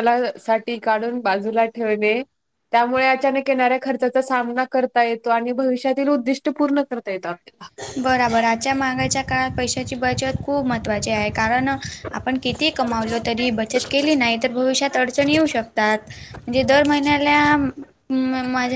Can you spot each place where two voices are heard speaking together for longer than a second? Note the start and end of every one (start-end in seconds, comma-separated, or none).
none